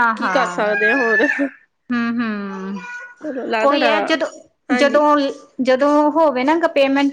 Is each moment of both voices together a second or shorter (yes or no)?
yes